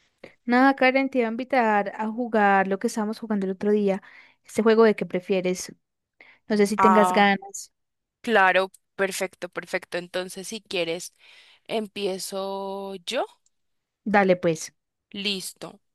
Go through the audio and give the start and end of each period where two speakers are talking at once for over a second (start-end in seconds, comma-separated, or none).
none